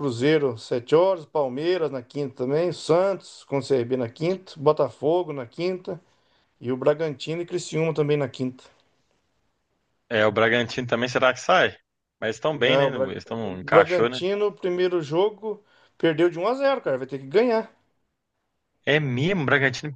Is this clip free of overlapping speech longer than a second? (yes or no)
no